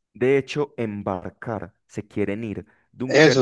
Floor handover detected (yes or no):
yes